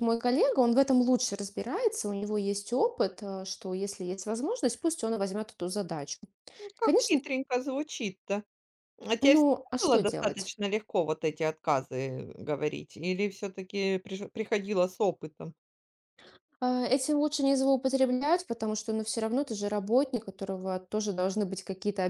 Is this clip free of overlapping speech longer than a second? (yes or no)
no